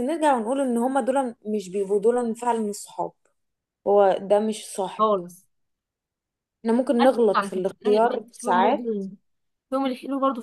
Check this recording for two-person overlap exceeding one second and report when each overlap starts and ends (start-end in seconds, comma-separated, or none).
7.0-9.0